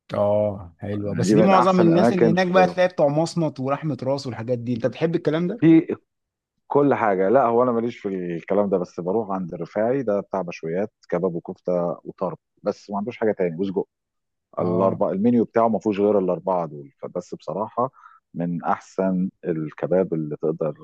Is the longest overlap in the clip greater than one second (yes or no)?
yes